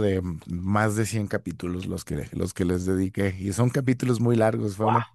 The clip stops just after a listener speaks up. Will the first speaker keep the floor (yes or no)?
yes